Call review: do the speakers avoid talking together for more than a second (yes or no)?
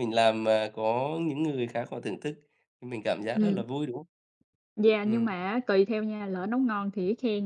yes